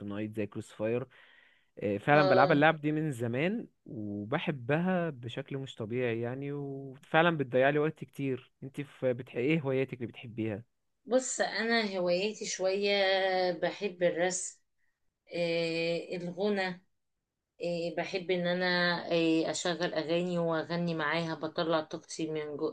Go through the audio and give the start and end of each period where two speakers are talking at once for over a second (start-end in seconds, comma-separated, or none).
none